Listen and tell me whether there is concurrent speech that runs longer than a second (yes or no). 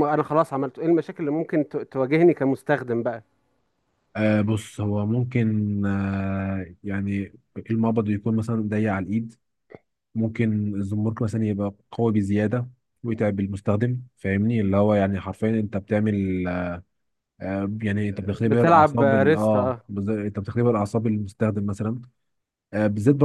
yes